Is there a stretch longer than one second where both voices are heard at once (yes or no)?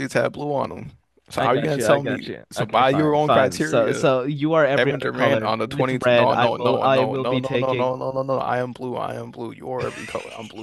yes